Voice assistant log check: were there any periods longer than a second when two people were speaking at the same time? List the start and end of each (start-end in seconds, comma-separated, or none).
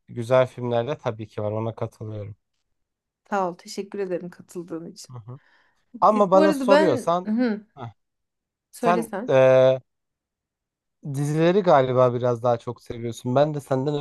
6.0-7.3